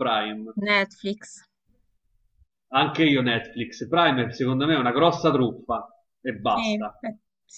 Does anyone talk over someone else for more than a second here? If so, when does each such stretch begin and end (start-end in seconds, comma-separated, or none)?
none